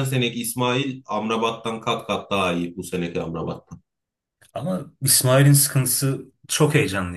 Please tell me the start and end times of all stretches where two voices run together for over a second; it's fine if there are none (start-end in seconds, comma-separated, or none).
none